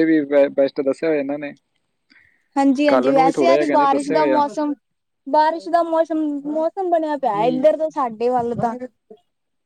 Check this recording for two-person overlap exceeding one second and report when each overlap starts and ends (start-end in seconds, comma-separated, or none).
2.9-4.4